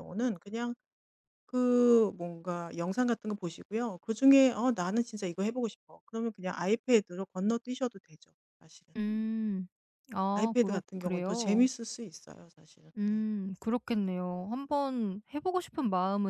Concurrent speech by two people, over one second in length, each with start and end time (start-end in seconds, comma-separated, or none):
10.3-11.7